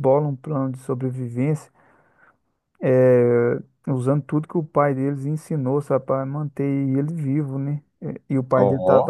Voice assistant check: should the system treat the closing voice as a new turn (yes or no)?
no